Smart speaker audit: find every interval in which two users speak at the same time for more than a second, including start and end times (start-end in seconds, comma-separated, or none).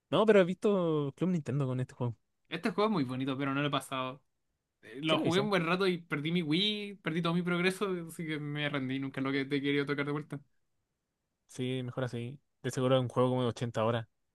none